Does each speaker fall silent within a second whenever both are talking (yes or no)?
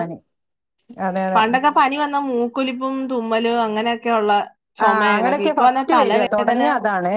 no